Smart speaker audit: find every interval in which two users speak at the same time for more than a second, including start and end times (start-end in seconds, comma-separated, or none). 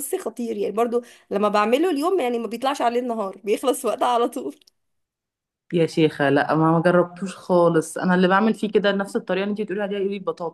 none